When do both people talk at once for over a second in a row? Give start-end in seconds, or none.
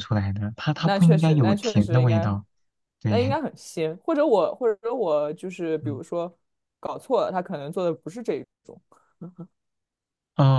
0.8-2.3